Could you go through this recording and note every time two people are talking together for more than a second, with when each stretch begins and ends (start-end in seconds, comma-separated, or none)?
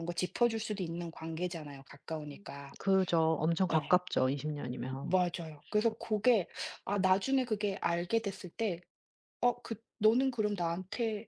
none